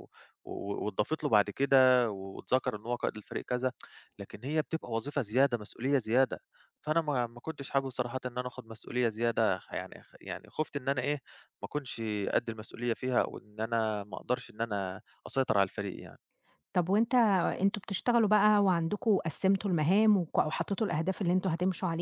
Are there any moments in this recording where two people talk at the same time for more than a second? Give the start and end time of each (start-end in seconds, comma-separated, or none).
none